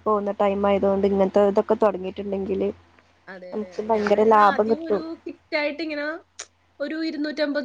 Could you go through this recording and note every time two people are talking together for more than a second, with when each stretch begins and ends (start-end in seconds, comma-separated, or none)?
none